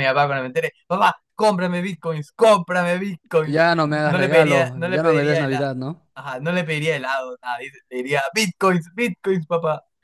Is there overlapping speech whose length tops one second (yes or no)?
yes